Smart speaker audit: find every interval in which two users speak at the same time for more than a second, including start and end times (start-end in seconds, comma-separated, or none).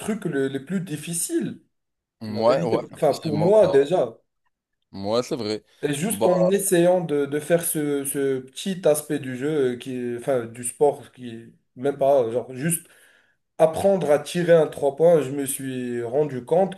2.3-3.8